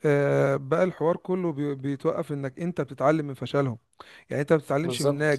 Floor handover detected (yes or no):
no